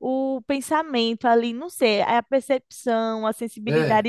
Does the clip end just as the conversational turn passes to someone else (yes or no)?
no